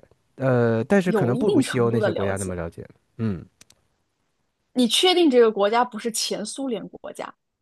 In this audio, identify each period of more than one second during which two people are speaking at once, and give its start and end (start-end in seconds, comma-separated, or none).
1.0-2.5